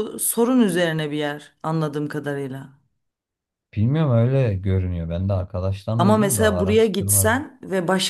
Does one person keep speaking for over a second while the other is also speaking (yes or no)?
yes